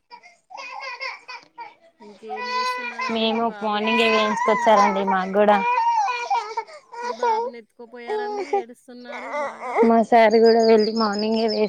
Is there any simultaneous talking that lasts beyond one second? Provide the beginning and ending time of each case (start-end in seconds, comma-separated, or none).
3.1-4.9